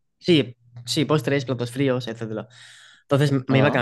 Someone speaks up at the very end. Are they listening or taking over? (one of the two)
listening